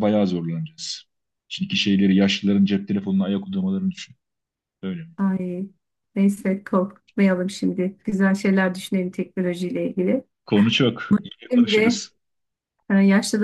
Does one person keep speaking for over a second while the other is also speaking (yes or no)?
no